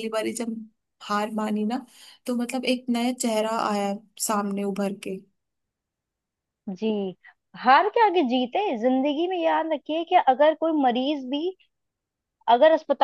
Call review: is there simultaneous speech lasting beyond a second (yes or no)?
no